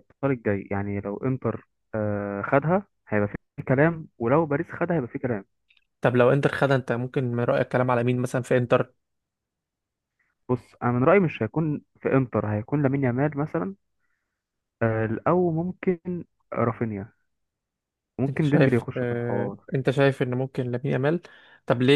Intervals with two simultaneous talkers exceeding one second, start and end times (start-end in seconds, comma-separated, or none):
18.3-19.6